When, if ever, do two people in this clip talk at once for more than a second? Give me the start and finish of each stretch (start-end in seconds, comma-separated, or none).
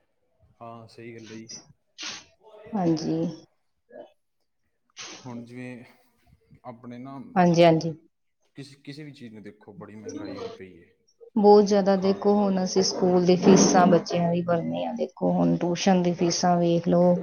none